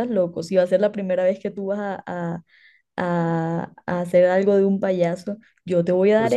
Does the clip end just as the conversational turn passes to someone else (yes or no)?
no